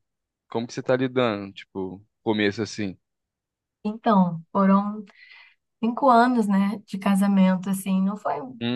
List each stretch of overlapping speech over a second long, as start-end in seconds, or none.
none